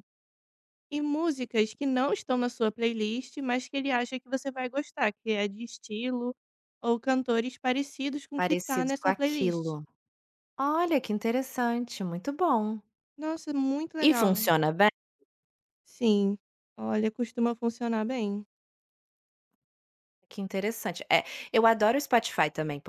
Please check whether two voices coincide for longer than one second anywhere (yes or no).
yes